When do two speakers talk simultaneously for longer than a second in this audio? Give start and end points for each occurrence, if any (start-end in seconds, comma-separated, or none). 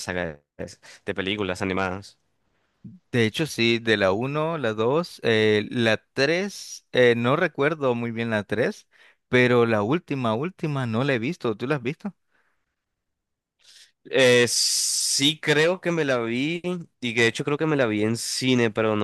none